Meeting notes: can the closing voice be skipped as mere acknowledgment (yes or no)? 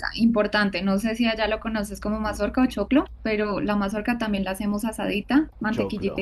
no